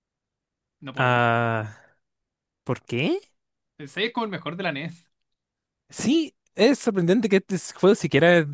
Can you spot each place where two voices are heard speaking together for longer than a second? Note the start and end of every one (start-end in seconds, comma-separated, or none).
none